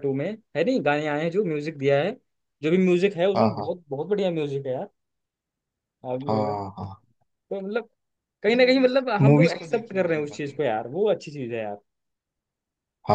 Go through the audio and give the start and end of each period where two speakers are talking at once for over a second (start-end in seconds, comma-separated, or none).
8.6-10.6